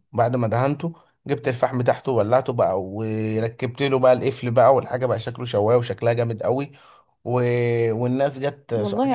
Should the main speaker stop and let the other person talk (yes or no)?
no